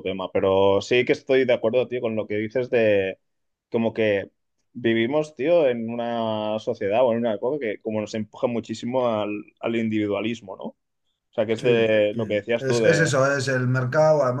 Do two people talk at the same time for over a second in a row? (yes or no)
yes